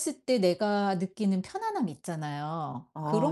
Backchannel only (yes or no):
no